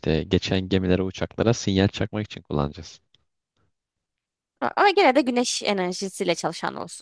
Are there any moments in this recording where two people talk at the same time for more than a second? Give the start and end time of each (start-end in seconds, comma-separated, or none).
none